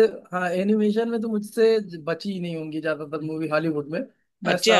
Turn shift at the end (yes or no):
no